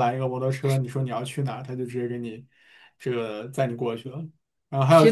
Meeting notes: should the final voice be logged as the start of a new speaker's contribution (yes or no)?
no